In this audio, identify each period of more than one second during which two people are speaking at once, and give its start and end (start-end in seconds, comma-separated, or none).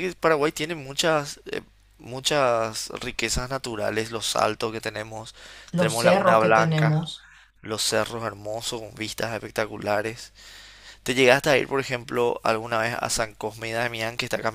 5.8-7.1